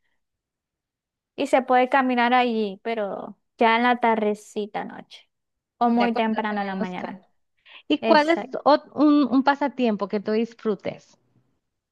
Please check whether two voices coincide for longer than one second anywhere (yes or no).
yes